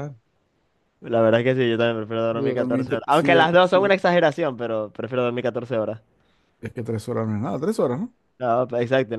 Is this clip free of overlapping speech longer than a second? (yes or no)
no